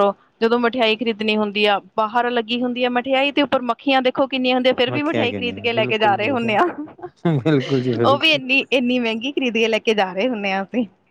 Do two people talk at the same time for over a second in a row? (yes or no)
yes